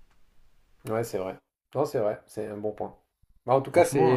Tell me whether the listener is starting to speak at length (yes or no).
no